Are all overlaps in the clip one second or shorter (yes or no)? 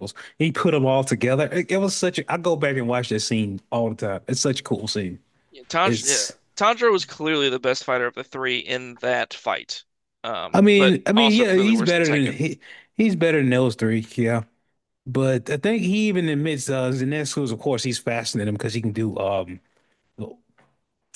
no